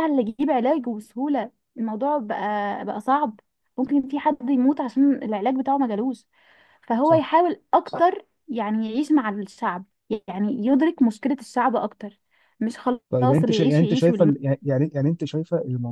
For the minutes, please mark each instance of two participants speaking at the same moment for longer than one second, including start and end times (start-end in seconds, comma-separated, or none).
13.1-14.3